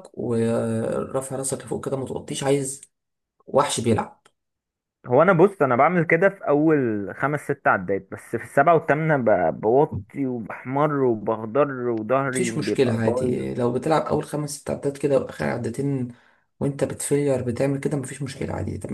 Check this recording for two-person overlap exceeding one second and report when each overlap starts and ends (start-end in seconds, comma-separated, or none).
12.3-13.6